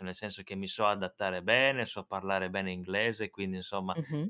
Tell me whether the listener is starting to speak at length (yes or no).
no